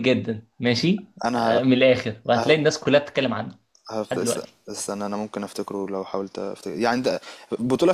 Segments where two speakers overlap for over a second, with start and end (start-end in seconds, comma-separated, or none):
none